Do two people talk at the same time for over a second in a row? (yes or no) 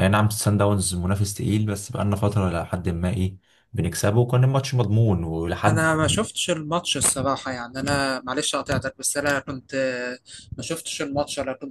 no